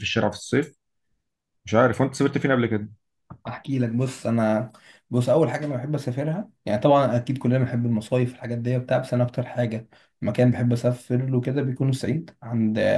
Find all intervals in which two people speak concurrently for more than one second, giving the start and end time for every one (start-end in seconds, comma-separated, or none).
none